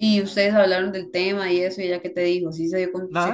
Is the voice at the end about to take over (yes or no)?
yes